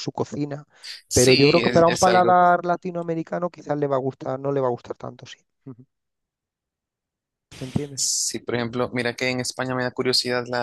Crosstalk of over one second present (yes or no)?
yes